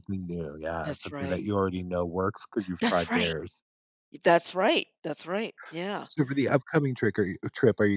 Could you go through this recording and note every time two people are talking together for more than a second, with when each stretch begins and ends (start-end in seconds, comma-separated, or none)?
none